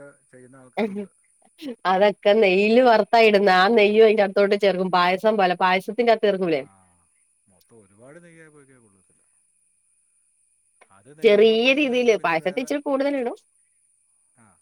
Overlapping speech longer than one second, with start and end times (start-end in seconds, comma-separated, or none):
11.2-12.7